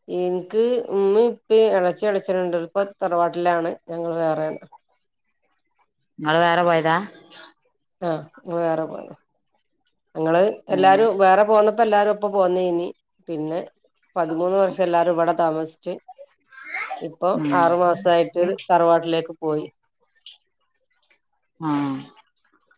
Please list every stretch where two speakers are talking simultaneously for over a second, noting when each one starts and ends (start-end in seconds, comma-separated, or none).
none